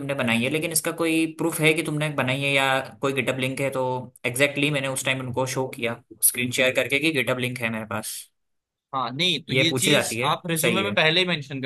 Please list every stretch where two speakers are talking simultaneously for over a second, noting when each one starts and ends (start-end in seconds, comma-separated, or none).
9.5-10.9